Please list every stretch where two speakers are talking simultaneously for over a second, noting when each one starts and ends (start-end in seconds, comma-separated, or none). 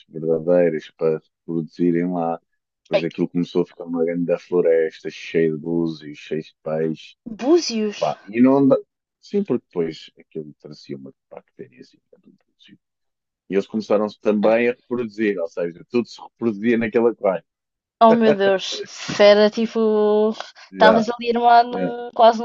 none